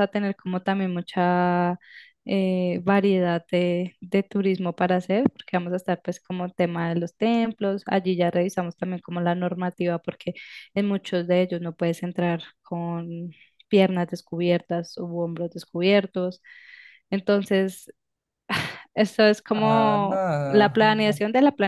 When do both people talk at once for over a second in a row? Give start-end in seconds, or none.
19.5-21.2